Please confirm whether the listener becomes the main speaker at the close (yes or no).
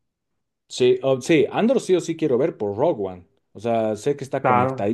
no